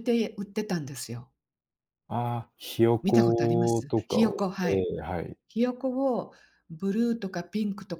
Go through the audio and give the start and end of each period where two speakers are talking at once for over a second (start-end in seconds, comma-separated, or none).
3.0-4.9